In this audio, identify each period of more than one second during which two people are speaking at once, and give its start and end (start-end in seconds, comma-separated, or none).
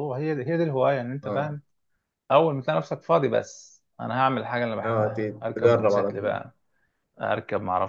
4.8-6.3